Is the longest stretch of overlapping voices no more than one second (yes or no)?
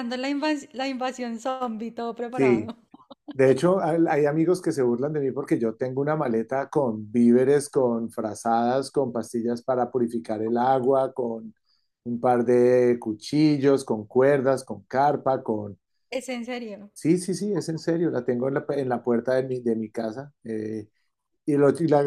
yes